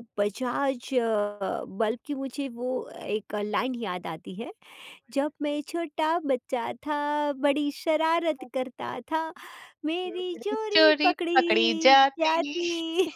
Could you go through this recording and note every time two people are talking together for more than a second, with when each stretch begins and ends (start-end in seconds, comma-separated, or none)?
10.1-12.4